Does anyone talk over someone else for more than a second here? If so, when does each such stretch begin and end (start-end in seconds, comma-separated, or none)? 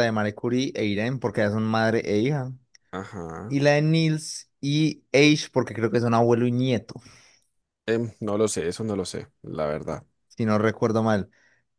none